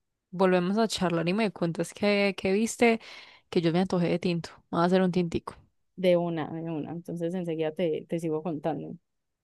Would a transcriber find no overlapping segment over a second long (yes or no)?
yes